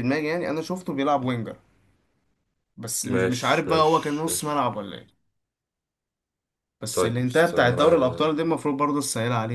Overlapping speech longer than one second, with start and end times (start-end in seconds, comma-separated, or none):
3.1-4.7, 6.9-8.3